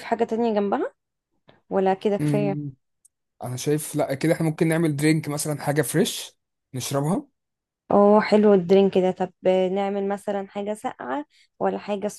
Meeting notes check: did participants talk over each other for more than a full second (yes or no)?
no